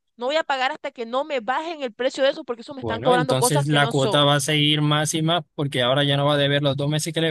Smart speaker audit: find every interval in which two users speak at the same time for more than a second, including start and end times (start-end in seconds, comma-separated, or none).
2.8-4.3